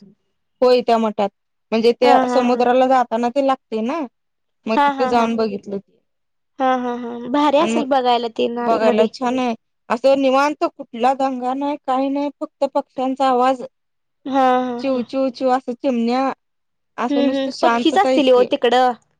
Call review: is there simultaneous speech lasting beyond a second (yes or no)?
yes